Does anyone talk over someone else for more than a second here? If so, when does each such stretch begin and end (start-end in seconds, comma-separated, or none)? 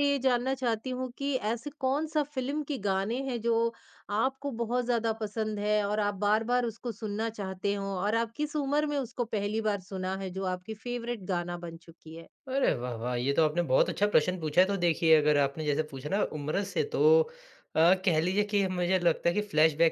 none